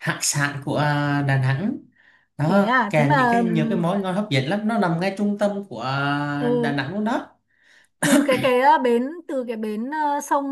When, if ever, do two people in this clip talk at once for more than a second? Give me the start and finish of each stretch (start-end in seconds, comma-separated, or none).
2.5-3.8